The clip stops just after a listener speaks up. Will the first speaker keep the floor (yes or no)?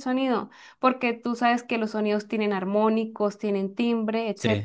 no